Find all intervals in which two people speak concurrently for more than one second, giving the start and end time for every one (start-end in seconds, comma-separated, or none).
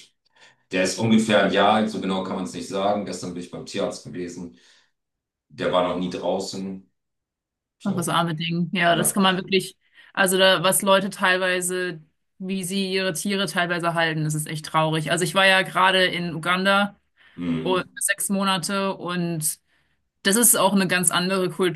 none